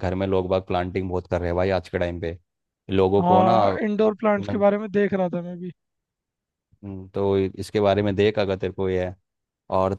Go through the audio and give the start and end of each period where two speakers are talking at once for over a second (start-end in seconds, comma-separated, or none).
3.2-4.7